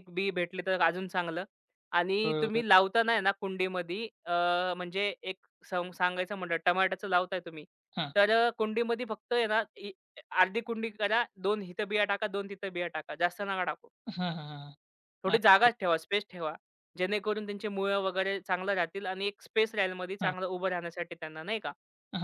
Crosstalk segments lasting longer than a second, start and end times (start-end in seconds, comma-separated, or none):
none